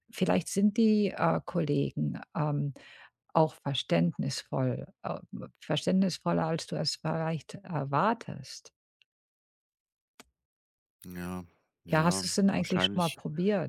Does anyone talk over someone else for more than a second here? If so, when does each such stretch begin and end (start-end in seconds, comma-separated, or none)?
11.9-13.2